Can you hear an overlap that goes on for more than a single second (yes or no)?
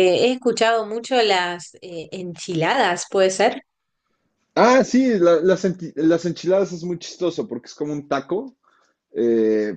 no